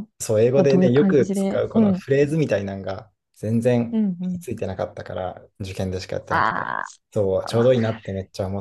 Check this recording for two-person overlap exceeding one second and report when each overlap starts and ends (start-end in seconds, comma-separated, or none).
0.5-2.0